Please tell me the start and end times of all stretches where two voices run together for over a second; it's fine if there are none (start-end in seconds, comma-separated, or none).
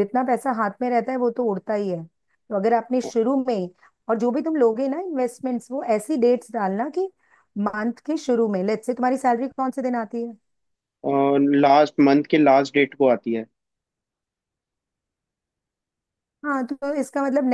none